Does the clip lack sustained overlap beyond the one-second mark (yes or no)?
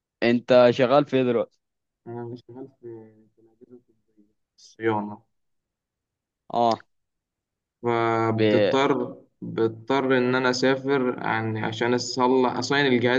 yes